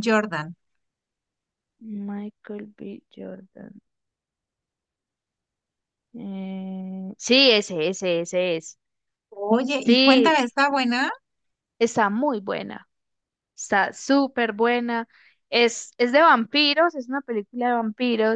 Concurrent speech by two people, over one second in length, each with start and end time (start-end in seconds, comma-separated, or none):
none